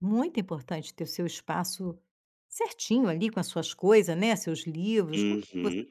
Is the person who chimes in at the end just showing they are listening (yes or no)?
no